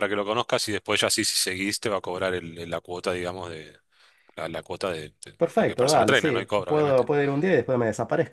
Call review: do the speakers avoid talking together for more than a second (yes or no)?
no